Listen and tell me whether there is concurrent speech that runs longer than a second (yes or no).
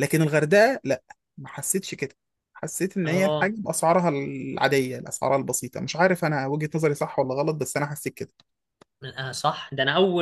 no